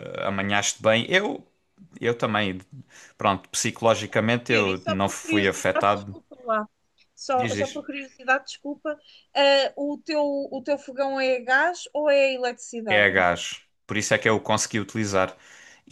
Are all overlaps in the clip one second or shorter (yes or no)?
no